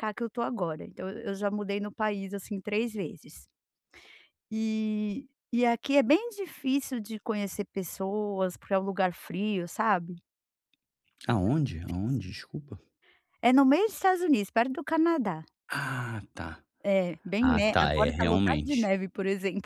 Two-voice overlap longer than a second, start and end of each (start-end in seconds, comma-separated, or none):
17.4-18.9